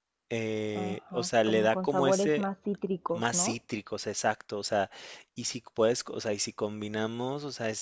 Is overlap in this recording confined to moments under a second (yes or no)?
no